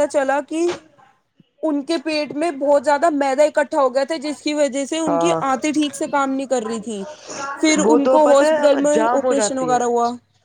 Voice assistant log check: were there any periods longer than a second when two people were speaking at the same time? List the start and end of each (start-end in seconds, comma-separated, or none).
7.8-9.8